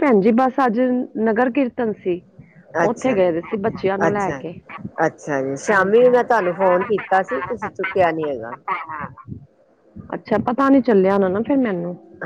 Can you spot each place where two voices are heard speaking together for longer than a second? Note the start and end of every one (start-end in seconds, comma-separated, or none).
none